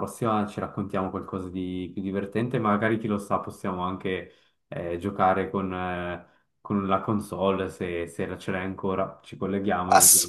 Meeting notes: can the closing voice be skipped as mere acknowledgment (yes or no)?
no